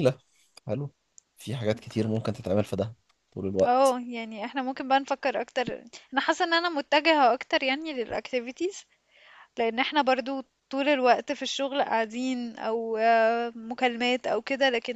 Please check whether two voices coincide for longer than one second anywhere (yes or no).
no